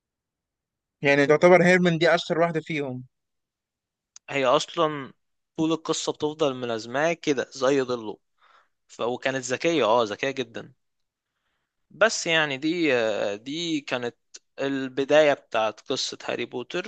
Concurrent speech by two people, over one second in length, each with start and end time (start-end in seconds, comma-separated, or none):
none